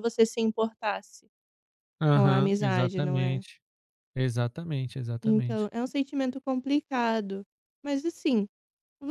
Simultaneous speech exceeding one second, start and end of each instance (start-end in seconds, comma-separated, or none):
2.1-3.4